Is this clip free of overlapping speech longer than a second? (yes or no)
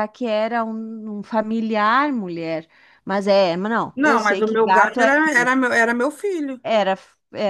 no